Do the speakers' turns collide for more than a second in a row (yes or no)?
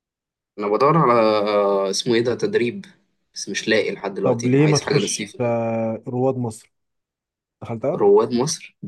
yes